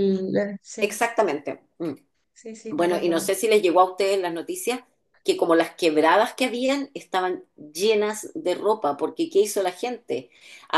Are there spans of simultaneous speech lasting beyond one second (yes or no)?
no